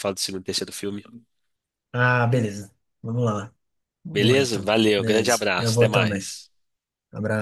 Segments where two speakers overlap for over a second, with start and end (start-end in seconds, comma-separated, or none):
4.1-6.3